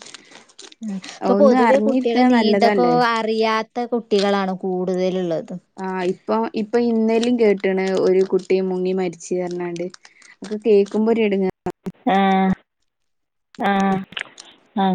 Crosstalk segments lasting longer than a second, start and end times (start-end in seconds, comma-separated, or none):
1.4-3.0